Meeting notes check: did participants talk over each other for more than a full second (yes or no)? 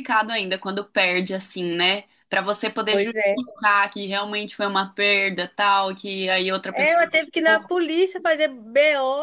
no